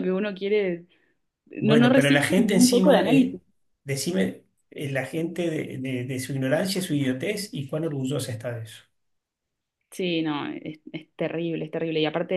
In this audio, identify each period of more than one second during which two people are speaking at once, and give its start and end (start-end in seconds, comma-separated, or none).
1.6-3.4